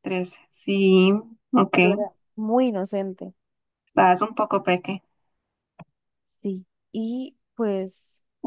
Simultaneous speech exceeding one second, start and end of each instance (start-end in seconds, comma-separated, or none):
none